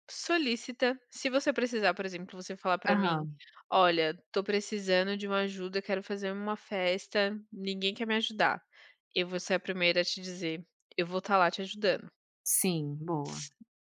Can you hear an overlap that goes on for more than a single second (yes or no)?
no